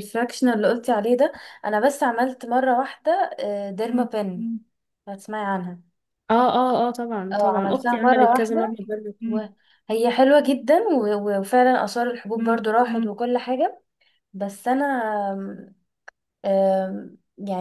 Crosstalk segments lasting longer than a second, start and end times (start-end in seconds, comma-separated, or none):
7.3-8.7